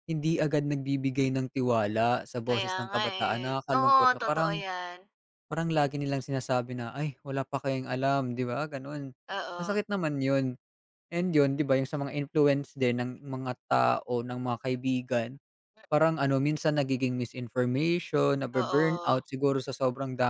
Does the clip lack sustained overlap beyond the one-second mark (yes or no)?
no